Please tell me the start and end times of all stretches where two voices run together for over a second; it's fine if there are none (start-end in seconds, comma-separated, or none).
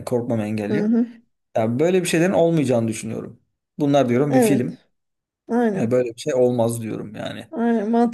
none